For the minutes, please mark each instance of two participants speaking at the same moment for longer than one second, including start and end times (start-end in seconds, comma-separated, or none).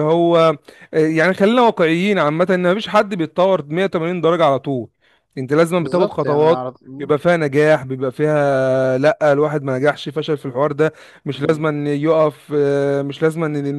5.8-7.2